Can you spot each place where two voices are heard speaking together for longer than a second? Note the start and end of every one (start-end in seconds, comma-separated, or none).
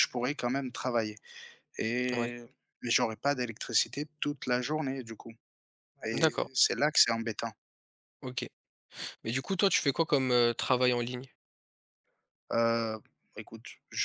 none